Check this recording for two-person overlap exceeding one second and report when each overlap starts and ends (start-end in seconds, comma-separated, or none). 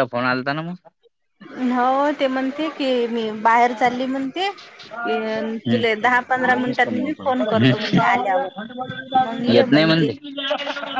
5.7-7.3